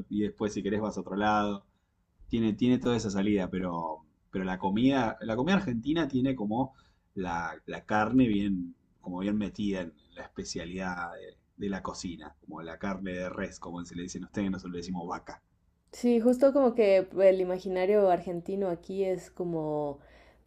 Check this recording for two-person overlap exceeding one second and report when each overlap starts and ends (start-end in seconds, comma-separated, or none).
none